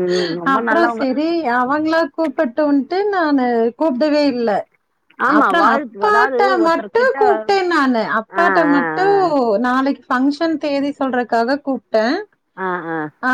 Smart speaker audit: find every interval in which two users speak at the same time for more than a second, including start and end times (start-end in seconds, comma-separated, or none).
5.4-7.2